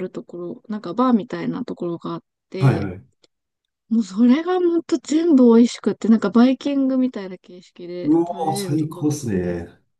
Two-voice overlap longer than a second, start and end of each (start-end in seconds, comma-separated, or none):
8.0-9.4